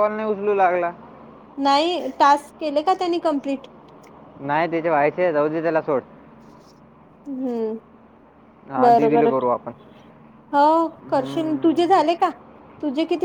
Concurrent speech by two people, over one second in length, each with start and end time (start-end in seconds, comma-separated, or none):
10.8-12.2